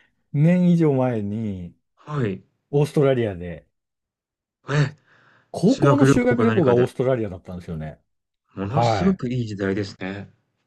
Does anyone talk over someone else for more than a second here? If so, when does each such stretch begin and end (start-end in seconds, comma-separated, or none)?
5.6-6.9